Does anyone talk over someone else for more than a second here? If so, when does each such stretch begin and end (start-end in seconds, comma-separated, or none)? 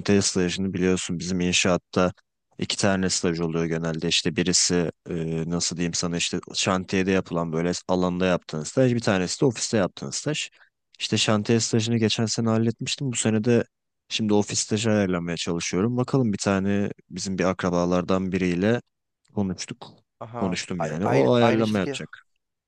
20.4-22.0